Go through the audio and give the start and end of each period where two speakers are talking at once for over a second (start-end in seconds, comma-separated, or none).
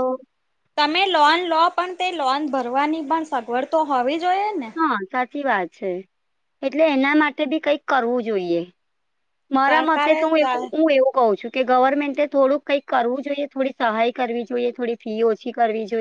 none